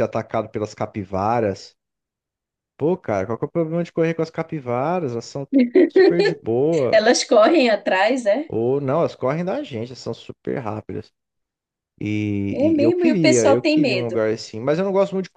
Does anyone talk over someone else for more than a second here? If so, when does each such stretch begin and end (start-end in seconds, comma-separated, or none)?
12.5-14.2